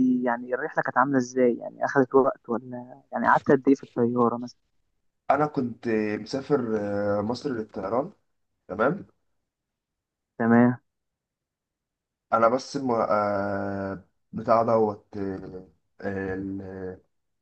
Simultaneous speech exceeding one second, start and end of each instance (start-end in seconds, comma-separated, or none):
none